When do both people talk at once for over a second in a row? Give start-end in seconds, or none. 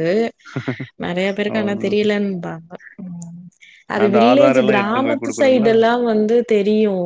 4.0-5.7